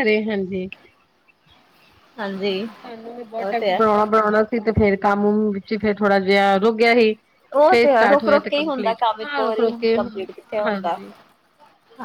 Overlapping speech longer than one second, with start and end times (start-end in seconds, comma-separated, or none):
7.7-10.0